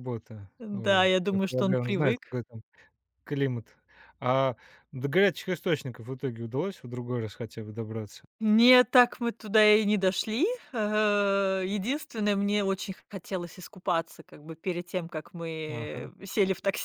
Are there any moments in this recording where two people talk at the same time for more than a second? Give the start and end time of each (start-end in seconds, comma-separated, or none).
0.6-2.2